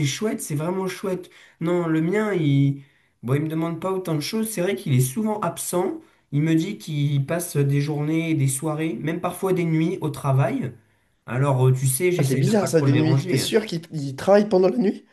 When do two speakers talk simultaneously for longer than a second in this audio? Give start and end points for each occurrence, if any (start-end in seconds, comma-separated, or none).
12.2-13.5